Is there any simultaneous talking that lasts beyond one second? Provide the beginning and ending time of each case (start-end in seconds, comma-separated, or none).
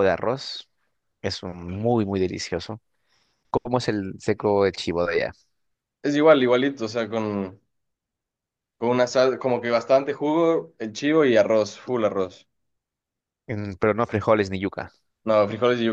none